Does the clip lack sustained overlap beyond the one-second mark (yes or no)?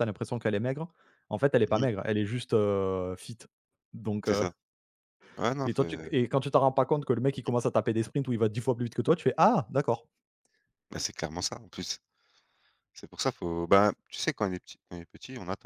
yes